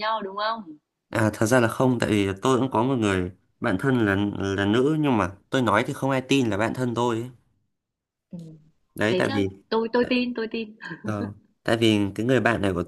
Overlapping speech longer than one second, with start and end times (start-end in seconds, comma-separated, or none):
none